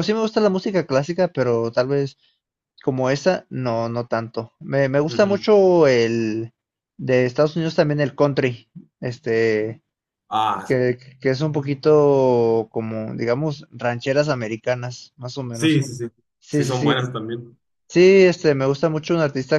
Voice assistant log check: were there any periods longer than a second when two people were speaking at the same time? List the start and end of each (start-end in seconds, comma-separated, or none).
none